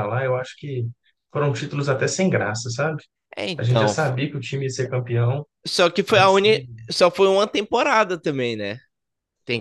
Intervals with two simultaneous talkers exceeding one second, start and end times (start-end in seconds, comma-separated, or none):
none